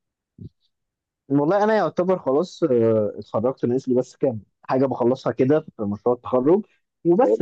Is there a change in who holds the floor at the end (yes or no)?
no